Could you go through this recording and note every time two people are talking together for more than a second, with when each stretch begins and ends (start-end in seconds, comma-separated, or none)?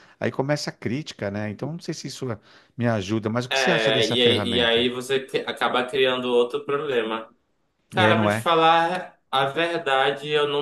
3.5-4.9